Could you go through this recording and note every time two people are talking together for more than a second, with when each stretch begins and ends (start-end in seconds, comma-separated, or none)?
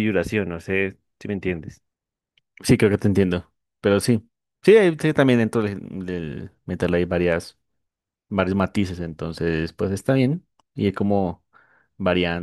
none